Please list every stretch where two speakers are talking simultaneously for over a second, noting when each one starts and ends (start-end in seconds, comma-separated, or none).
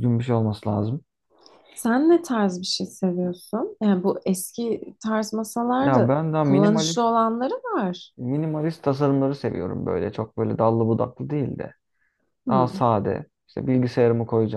5.8-7.1